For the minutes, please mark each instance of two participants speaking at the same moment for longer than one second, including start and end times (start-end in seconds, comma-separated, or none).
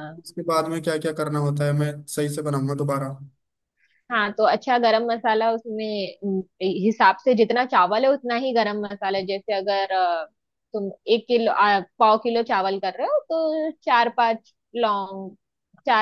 none